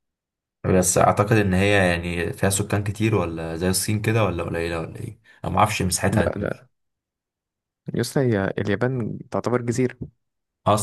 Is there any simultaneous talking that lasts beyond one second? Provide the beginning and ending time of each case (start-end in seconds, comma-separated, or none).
none